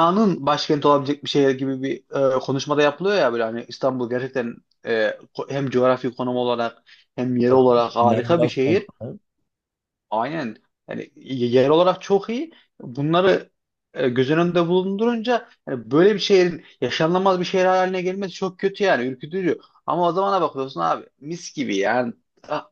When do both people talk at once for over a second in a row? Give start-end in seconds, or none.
7.5-8.9